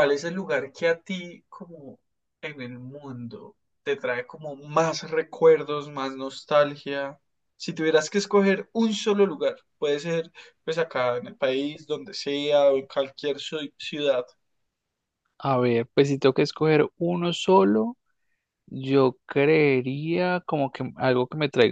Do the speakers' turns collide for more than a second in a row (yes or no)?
no